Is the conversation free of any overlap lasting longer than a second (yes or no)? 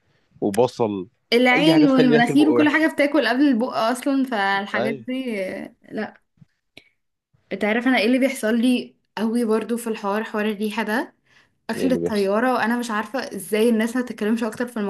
no